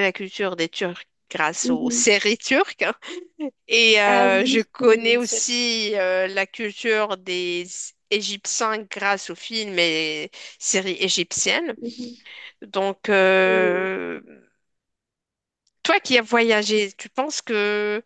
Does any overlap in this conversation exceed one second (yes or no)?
yes